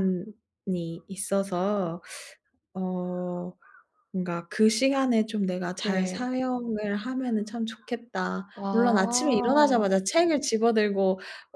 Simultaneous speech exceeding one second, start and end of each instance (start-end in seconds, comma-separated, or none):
8.6-9.9